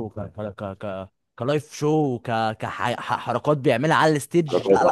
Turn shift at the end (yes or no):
yes